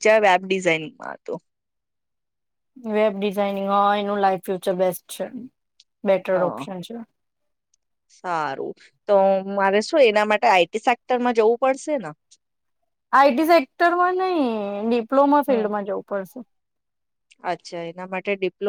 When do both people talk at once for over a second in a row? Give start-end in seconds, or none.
none